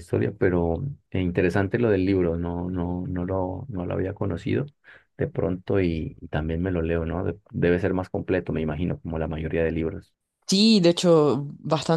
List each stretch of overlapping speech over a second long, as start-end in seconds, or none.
none